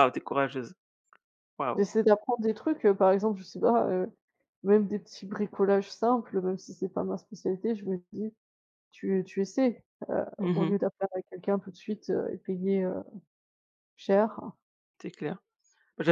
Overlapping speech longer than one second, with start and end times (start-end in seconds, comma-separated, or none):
none